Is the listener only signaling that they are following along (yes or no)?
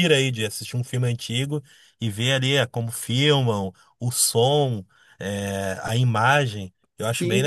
no